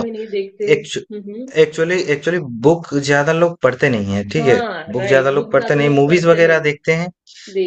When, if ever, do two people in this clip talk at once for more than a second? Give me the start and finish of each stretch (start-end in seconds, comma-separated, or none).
4.4-6.7